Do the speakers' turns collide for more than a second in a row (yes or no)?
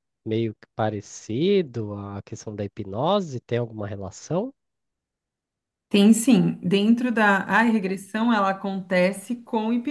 no